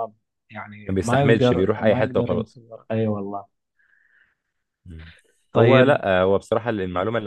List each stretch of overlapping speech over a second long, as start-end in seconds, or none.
0.9-2.6